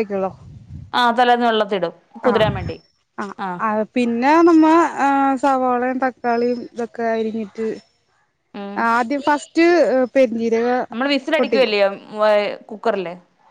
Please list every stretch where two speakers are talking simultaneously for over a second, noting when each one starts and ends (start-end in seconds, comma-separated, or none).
none